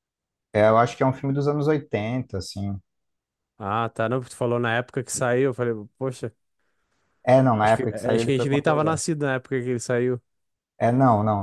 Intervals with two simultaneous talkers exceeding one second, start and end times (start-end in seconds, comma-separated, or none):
7.6-9.1